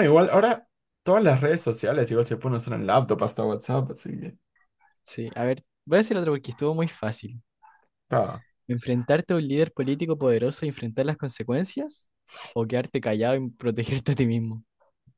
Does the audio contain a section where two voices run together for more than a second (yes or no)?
no